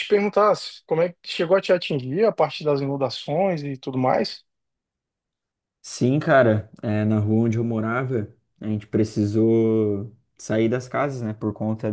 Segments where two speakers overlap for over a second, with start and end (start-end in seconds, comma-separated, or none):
none